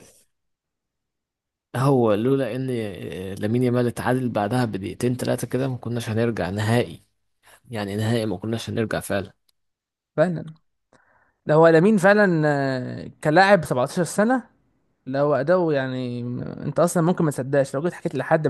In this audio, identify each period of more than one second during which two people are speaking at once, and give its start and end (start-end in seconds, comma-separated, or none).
none